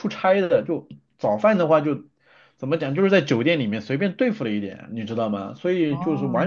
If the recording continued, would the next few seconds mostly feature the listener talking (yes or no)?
no